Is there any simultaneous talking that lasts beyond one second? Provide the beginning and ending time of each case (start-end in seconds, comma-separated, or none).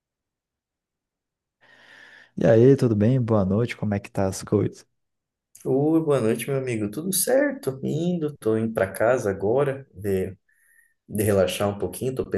none